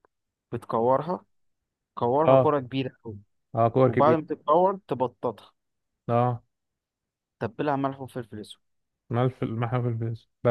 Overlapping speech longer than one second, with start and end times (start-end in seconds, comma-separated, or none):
none